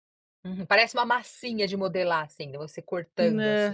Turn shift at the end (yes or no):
yes